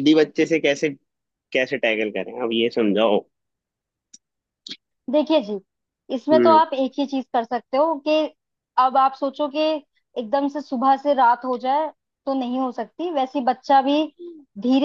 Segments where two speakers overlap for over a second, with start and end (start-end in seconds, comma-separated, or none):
none